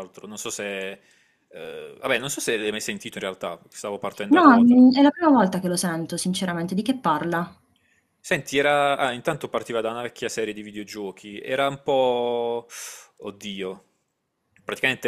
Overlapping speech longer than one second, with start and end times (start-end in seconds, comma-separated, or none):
none